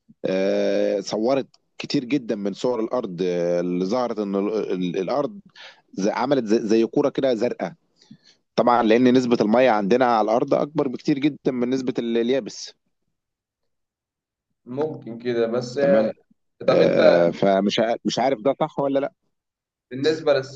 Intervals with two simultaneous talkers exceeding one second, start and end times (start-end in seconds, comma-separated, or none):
none